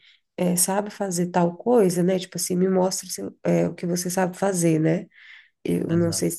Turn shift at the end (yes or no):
no